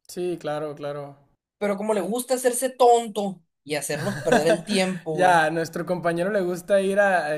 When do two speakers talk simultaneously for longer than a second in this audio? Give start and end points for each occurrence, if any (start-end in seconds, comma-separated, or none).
none